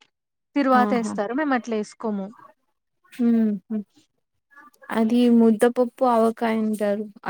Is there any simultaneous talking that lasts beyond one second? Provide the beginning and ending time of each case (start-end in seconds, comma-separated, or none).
none